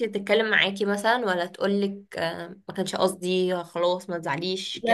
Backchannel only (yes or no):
no